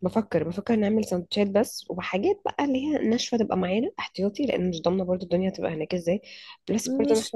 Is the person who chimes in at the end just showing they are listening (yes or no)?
yes